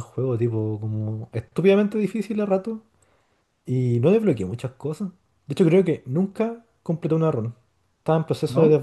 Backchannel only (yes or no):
yes